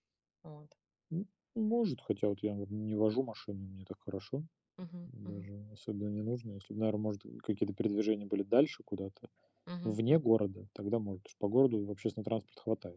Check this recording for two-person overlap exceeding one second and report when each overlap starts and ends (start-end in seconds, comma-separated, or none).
none